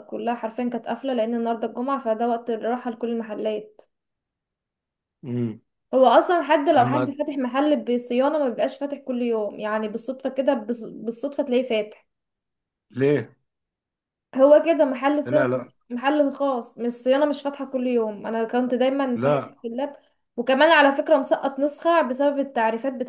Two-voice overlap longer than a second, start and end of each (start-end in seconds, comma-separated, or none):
none